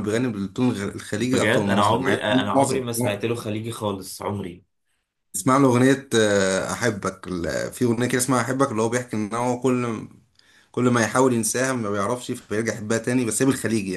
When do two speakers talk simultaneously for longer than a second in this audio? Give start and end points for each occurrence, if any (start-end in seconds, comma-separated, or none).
1.3-3.2